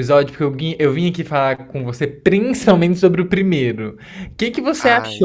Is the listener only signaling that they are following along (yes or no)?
yes